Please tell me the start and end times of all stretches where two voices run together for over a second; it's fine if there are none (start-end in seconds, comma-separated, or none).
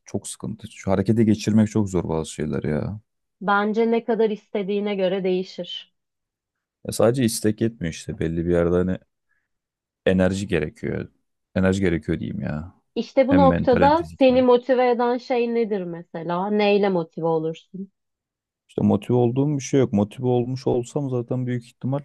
13.2-14.4